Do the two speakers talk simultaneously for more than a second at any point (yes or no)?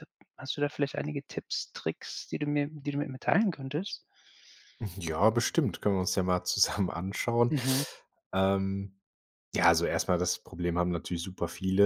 no